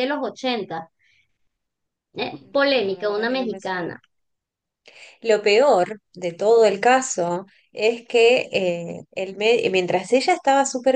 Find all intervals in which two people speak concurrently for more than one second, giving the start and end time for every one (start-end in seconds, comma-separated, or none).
2.2-3.9